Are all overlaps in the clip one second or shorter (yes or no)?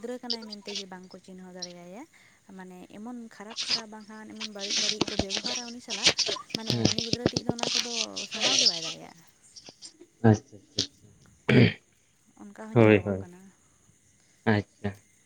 yes